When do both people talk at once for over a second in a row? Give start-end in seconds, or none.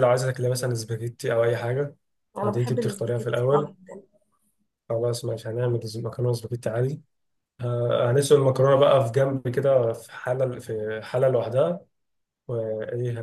2.4-3.7